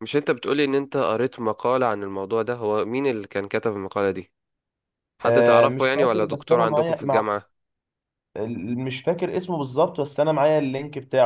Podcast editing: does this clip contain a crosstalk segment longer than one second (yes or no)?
yes